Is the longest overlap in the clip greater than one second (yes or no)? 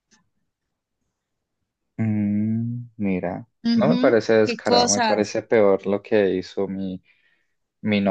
yes